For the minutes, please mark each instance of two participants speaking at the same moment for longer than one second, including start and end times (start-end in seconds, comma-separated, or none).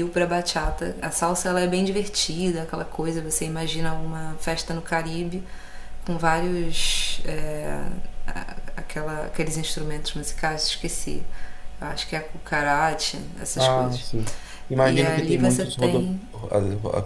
14.8-16.2